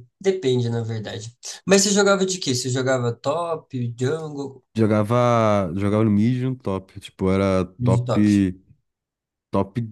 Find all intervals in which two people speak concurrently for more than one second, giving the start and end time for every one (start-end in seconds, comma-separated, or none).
none